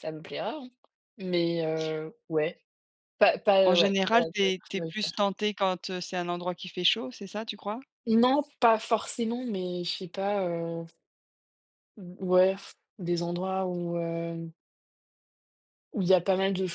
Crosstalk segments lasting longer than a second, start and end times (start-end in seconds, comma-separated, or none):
3.6-5.2